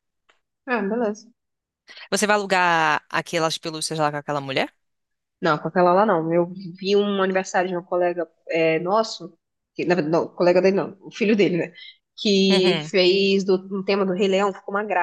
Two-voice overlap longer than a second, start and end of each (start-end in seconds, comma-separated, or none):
none